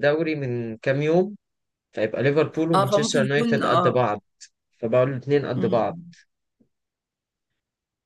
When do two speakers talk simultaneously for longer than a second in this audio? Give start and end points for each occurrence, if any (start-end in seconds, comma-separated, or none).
2.7-4.1